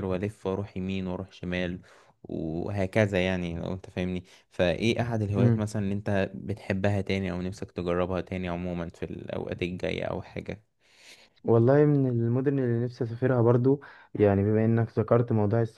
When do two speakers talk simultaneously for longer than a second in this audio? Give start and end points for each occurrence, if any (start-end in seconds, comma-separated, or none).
none